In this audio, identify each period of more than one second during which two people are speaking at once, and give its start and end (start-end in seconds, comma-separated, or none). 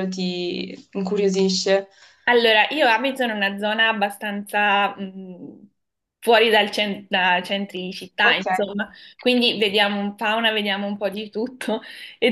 none